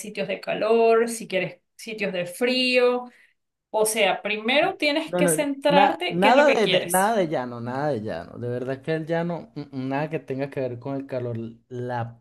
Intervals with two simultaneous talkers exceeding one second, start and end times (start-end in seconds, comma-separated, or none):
5.1-7.2